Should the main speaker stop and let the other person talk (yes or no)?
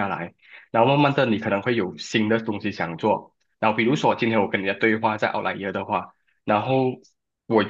no